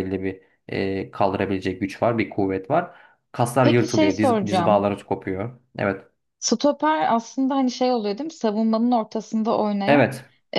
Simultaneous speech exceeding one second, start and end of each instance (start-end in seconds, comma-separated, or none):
3.6-4.8